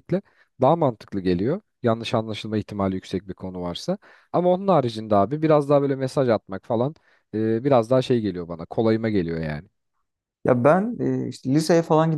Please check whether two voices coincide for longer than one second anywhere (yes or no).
no